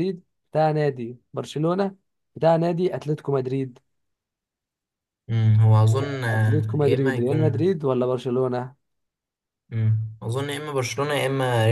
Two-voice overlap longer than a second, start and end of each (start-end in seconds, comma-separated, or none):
6.3-7.7